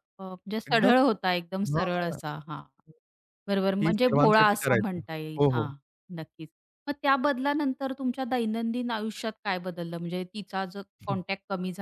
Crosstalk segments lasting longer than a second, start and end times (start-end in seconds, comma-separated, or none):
3.8-5.7